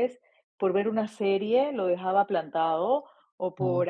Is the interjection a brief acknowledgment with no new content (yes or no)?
yes